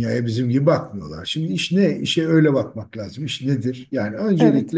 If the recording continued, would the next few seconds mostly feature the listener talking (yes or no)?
no